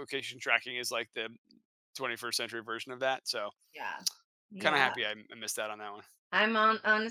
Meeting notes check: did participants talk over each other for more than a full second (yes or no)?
no